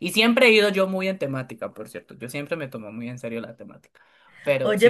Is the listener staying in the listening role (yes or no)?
no